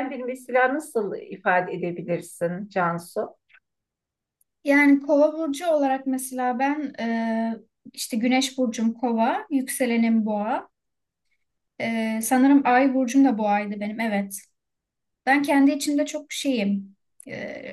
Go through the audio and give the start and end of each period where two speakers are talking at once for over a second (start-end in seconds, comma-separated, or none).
none